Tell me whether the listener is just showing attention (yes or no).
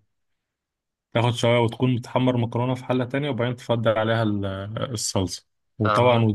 yes